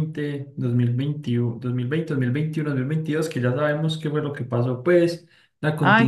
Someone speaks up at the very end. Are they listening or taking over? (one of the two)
listening